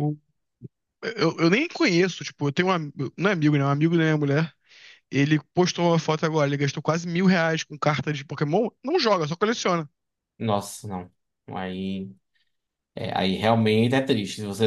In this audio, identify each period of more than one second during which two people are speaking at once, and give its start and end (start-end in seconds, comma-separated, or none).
none